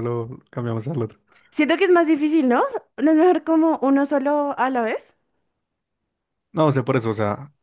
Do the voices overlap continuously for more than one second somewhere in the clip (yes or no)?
no